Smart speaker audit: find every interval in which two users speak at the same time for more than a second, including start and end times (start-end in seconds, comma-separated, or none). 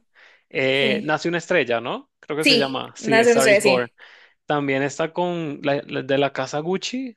2.4-3.9